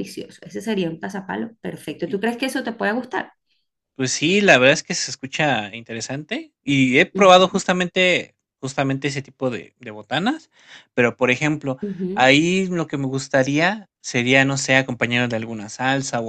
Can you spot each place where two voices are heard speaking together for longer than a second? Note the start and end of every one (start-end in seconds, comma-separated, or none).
none